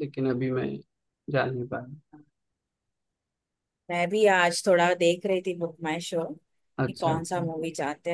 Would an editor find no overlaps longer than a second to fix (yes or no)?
yes